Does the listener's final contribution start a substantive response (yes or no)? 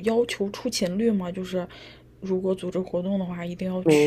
yes